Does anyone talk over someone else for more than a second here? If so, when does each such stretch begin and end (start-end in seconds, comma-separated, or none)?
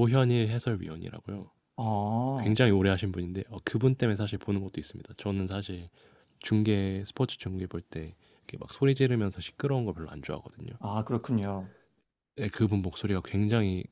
none